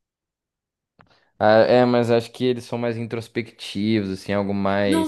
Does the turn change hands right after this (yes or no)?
yes